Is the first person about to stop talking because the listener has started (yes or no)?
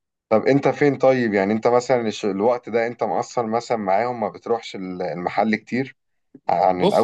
yes